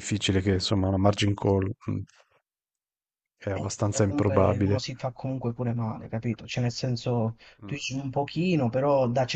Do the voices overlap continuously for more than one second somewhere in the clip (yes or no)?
yes